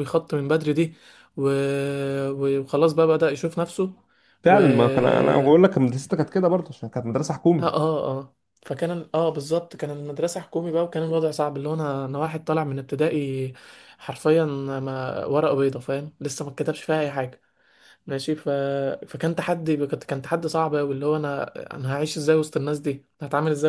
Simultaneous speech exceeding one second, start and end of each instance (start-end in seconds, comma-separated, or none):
none